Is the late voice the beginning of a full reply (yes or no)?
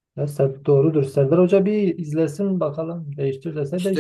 yes